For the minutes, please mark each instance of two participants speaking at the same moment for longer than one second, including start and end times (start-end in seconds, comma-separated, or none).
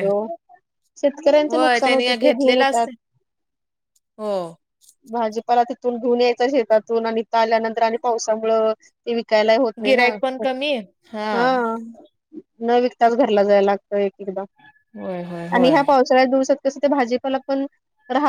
1.5-2.9